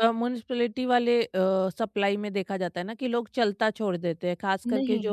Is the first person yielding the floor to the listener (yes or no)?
yes